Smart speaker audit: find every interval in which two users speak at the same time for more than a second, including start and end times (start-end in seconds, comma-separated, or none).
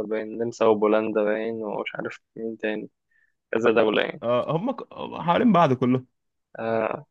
none